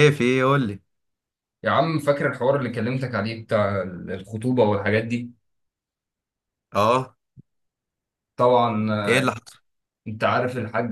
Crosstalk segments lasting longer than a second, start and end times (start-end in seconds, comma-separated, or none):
none